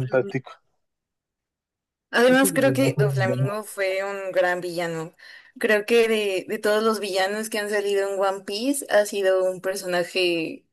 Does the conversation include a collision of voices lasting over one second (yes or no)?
yes